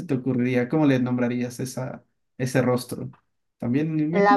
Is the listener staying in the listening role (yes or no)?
no